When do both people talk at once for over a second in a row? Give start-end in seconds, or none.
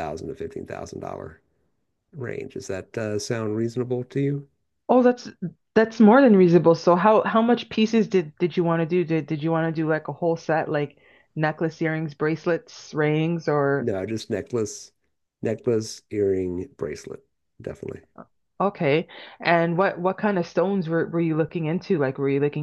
none